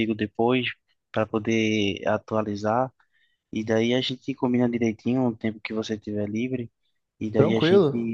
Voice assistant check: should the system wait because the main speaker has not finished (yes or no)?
yes